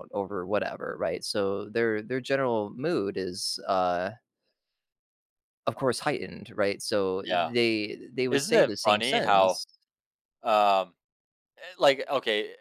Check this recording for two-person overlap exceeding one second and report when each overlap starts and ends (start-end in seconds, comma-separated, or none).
8.3-9.6